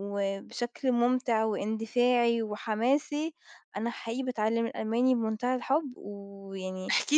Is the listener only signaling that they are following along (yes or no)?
no